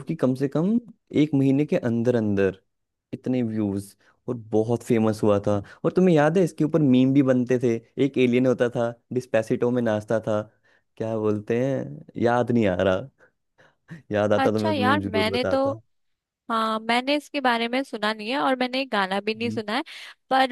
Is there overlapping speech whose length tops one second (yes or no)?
yes